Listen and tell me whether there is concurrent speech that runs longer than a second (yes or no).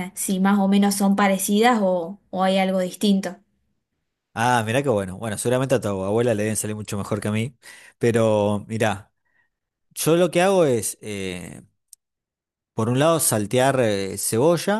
no